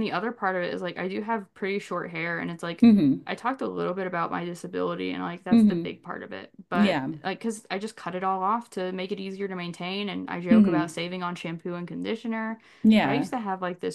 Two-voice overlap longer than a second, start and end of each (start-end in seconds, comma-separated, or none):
none